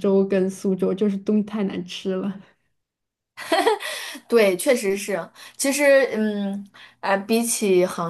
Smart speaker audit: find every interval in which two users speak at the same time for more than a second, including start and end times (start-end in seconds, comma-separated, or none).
none